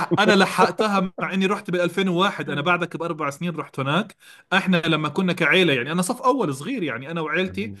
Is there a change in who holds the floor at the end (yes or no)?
no